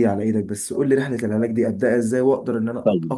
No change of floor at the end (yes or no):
no